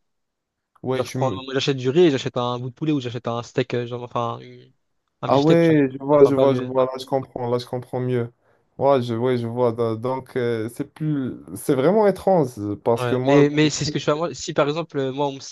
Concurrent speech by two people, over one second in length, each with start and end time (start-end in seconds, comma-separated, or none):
5.3-6.8